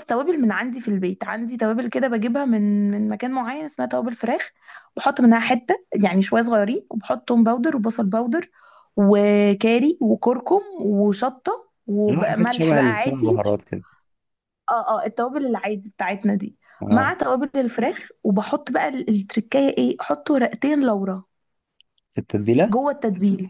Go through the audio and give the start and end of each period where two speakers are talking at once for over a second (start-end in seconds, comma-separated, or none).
12.1-13.6